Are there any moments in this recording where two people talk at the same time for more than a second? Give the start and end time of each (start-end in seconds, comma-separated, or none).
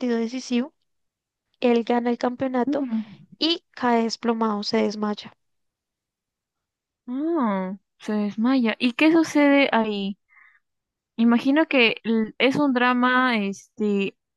none